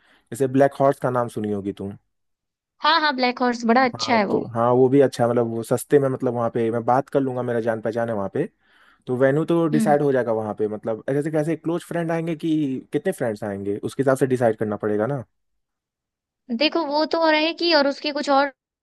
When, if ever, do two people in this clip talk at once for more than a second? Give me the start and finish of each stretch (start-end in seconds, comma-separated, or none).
none